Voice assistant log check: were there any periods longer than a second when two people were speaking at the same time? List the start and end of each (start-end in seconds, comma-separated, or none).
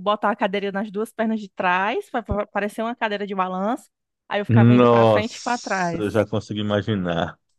4.5-6.0